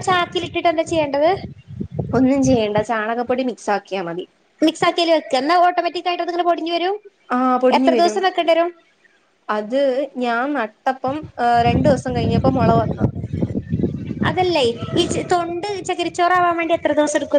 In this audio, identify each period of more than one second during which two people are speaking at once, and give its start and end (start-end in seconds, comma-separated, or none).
none